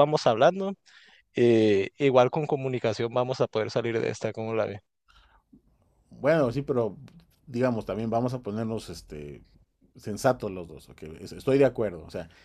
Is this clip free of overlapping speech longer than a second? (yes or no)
yes